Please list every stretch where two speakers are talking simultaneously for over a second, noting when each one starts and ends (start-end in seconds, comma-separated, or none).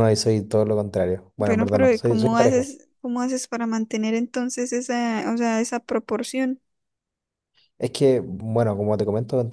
1.4-2.7